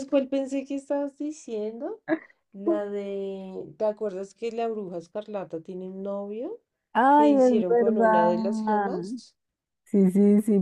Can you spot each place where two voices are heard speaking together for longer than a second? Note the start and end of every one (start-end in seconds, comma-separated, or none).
7.1-8.3